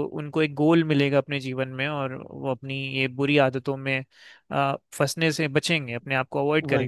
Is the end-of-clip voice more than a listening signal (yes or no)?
yes